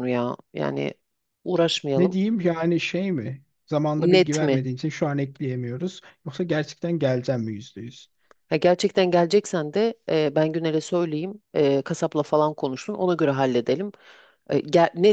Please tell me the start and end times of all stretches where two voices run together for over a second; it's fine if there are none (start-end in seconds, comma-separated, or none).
none